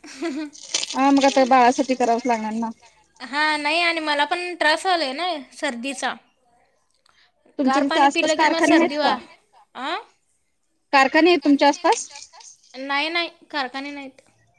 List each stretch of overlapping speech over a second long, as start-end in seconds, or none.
7.7-9.1